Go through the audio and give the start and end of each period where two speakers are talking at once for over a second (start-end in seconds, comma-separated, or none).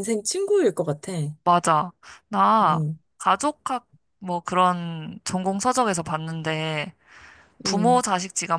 none